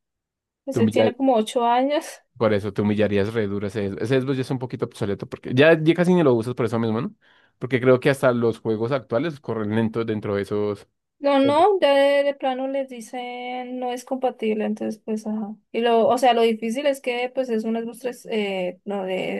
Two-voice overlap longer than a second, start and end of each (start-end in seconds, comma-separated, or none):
none